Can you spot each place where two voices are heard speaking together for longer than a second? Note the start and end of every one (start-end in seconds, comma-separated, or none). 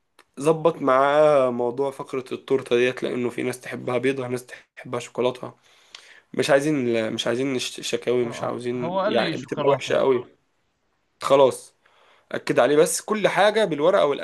8.2-10.0